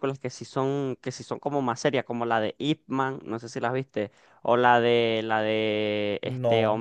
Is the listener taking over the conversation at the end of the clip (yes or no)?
no